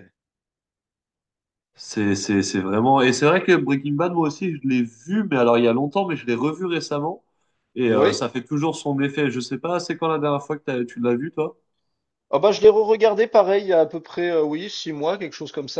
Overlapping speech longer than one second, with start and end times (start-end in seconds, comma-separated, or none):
none